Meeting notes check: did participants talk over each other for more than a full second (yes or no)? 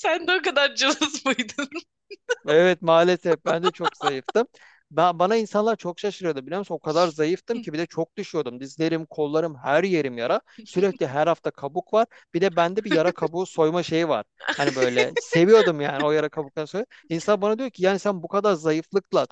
no